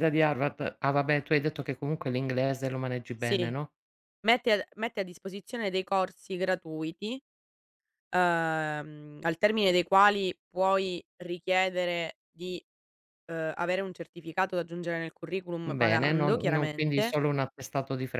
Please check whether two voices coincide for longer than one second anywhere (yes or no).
yes